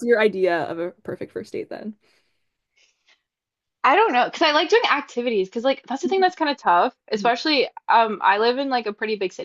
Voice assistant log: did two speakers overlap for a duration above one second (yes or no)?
no